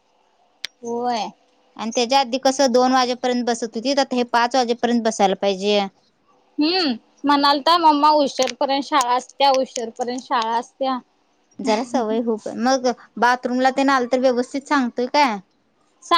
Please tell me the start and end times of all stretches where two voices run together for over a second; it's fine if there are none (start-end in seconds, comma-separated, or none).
none